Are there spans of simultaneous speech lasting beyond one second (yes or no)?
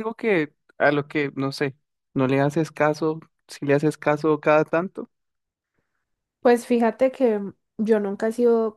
no